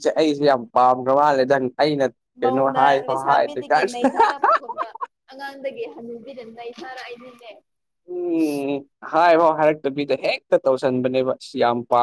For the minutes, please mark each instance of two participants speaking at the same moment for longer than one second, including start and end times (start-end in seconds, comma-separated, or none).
2.4-4.2